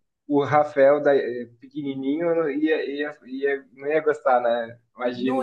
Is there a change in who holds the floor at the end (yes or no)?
yes